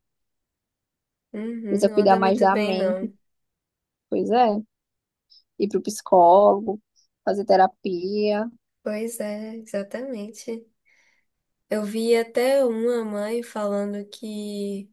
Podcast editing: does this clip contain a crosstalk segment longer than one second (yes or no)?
yes